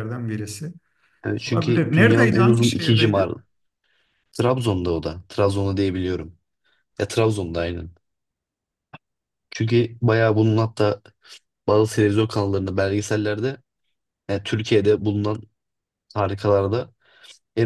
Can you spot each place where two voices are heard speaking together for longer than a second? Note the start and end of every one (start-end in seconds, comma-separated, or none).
1.5-3.3